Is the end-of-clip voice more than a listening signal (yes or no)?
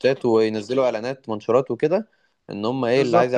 yes